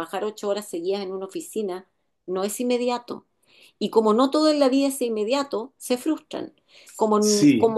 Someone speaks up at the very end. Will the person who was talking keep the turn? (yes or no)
yes